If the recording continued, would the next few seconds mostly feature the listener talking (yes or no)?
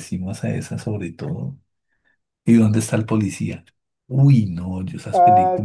no